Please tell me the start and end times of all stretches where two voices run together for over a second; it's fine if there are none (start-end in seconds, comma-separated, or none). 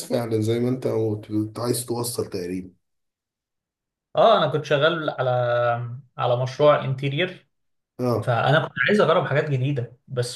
none